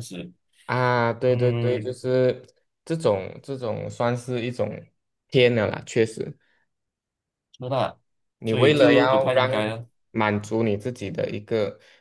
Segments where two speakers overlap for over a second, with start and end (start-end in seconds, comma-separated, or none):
8.4-9.8